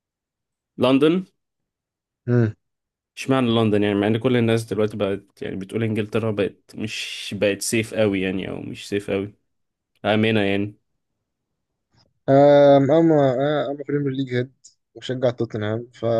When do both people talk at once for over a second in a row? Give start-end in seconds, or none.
none